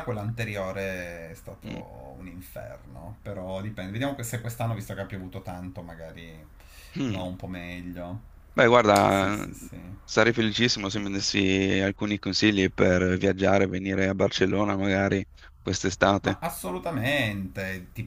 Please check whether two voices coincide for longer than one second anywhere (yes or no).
no